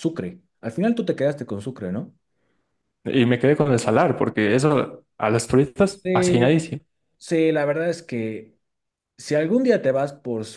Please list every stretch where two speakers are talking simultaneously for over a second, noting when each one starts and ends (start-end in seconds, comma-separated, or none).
none